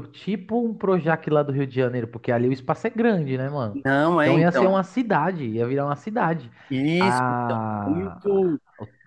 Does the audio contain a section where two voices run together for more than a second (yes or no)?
yes